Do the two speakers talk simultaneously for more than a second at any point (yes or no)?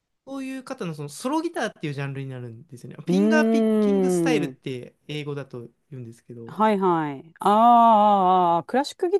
yes